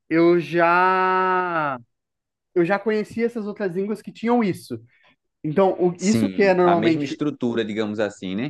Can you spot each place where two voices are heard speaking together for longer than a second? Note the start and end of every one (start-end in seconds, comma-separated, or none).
6.0-7.2